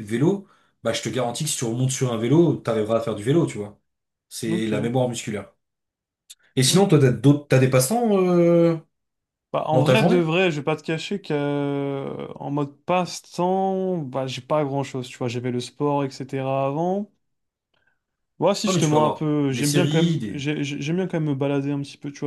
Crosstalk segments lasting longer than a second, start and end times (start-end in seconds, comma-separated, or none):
18.7-20.5